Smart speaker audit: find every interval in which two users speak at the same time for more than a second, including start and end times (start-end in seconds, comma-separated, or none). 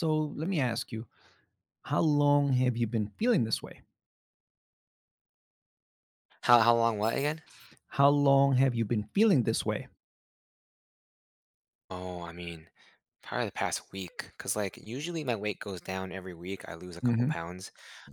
none